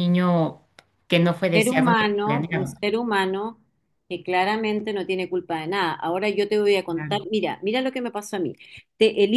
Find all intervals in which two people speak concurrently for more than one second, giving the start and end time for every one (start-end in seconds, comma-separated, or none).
1.5-2.7